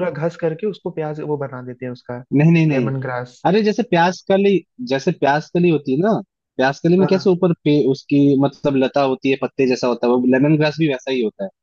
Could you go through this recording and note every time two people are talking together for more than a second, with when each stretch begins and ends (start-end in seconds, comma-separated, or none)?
none